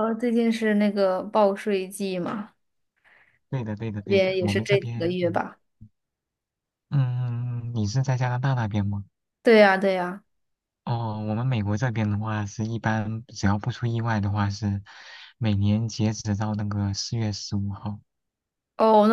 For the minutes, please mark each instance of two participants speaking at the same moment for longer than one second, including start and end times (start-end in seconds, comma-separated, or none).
4.0-5.4